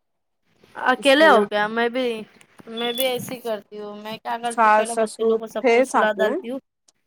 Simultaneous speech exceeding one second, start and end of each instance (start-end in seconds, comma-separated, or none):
4.5-6.3